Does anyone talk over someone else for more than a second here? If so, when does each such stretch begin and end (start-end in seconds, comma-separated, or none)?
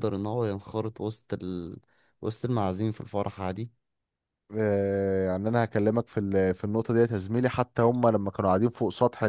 none